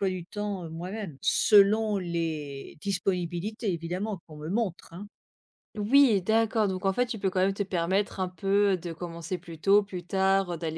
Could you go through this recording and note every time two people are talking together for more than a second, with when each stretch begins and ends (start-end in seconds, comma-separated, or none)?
none